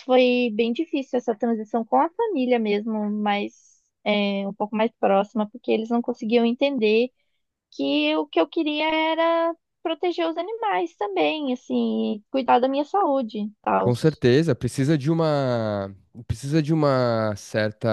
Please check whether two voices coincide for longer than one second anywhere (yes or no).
no